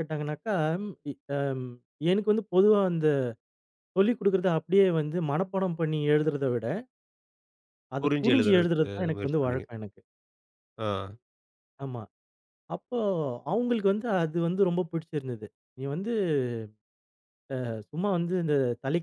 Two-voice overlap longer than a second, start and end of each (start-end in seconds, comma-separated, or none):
8.0-9.7